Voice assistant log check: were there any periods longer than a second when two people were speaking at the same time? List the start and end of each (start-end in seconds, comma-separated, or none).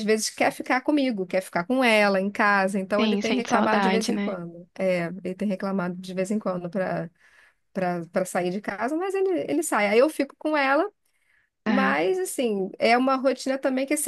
3.0-4.4